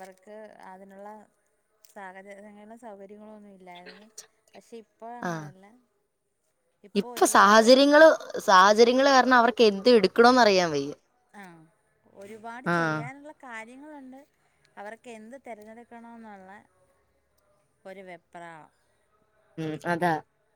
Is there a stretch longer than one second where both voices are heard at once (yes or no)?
no